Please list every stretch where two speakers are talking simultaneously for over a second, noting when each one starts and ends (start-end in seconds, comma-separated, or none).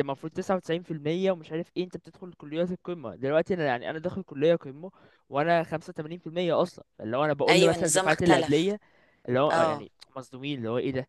7.5-8.8